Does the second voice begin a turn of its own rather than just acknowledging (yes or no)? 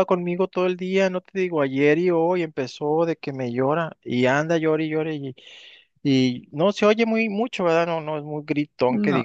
no